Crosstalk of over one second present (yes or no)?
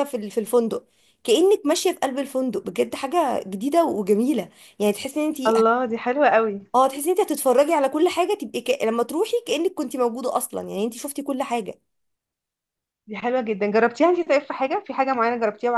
no